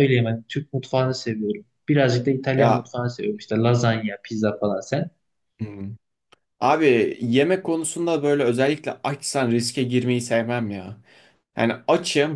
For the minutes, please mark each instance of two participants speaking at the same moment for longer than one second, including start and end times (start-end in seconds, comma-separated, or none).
none